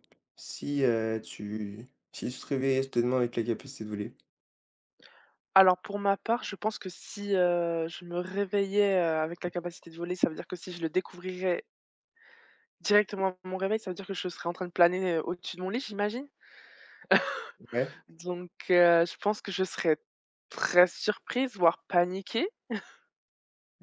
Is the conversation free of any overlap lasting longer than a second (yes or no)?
yes